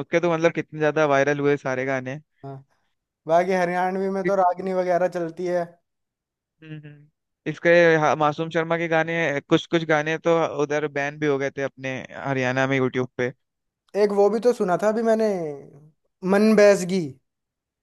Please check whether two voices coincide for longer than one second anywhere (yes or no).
no